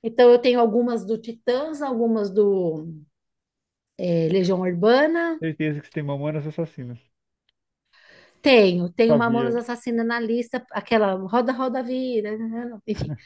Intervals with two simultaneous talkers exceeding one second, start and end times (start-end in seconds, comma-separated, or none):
none